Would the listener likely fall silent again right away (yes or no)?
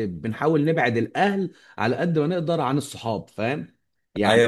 no